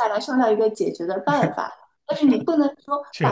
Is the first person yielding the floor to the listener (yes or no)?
no